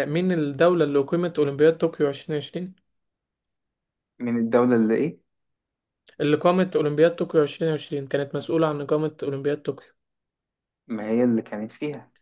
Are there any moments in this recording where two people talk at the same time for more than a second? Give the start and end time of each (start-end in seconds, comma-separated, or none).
none